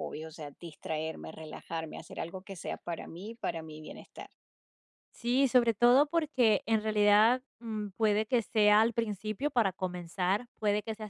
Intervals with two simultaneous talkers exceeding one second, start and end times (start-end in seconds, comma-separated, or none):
none